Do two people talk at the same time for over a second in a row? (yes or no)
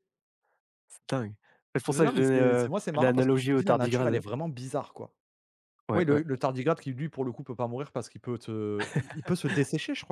yes